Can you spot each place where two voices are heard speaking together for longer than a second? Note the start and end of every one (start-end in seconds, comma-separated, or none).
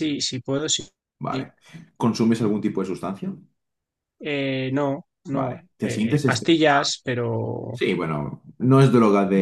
5.3-6.8